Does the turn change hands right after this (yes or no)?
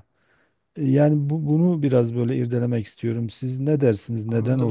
yes